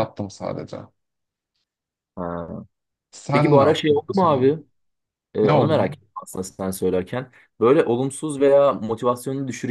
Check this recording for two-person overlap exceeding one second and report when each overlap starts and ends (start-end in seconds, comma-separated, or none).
3.3-4.5